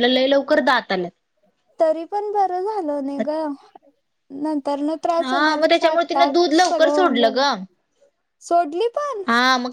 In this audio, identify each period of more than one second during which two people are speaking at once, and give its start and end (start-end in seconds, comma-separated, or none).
5.2-7.4